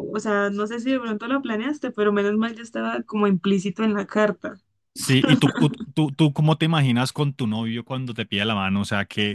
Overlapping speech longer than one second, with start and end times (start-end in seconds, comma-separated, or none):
none